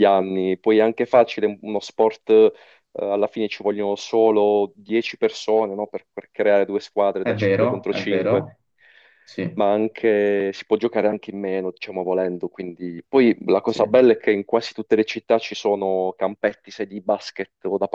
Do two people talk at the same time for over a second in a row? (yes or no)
yes